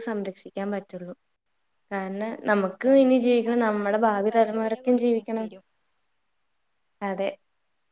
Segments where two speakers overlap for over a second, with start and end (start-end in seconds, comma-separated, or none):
2.9-5.5